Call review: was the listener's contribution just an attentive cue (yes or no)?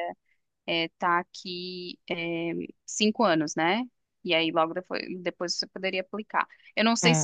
no